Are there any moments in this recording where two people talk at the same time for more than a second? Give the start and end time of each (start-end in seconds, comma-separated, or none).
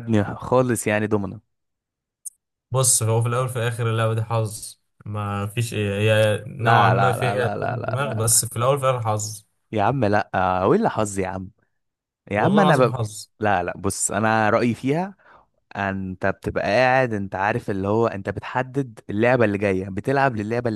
6.6-8.4